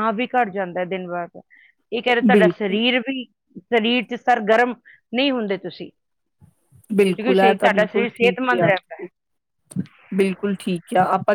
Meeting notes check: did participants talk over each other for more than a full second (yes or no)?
yes